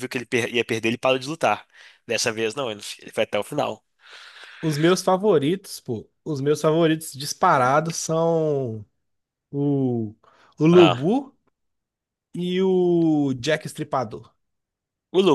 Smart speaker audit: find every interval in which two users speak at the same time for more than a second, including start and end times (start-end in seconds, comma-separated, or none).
none